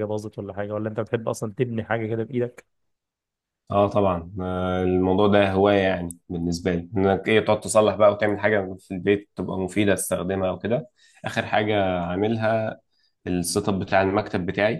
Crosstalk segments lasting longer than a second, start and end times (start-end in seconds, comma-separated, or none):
none